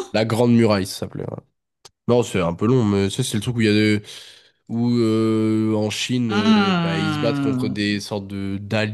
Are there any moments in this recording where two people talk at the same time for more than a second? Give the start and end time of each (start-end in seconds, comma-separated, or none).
6.3-7.8